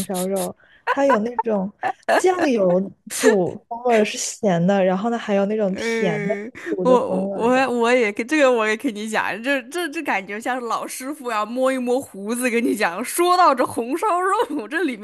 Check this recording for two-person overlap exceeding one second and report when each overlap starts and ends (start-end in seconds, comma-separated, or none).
5.7-7.7